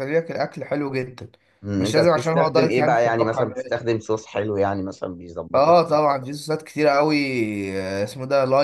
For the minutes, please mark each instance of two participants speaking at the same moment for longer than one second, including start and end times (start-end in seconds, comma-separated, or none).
1.8-3.4